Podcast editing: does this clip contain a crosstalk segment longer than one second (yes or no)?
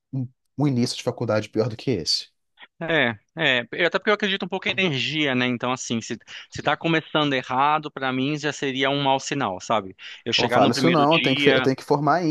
yes